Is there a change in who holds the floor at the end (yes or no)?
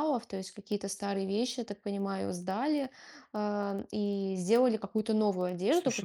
no